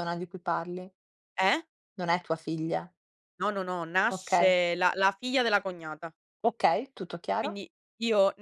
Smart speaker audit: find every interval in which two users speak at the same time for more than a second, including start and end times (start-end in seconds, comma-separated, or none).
none